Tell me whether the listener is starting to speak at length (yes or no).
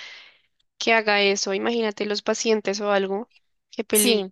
yes